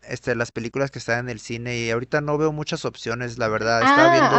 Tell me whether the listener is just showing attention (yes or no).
no